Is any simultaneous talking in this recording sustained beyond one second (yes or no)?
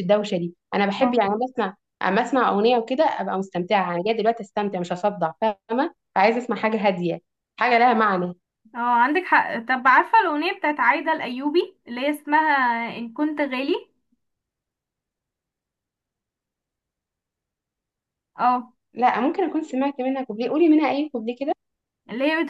no